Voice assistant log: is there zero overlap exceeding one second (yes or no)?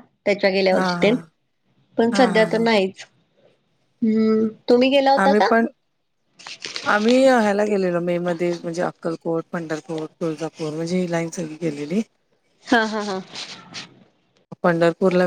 yes